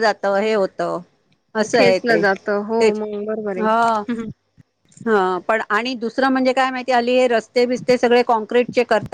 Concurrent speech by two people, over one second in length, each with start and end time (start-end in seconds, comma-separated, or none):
none